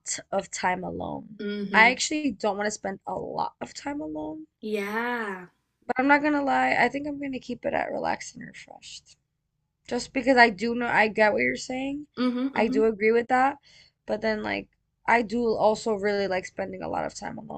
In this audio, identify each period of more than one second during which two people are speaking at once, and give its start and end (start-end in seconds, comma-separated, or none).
none